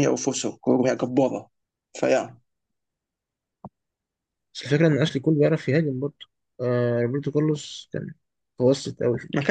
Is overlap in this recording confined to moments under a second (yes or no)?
yes